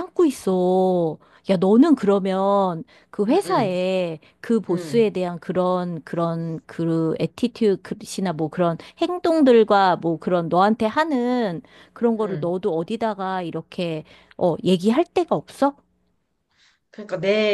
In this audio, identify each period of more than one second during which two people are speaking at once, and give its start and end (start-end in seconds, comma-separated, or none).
none